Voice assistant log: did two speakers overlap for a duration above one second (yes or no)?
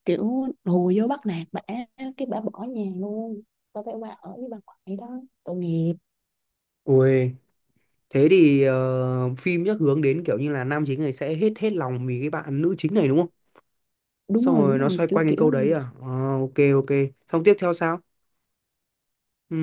yes